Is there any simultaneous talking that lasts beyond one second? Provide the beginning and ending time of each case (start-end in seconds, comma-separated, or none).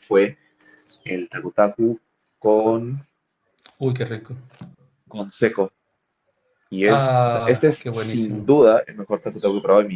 6.8-8.6